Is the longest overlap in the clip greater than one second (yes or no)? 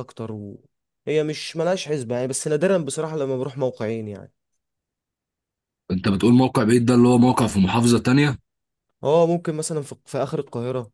no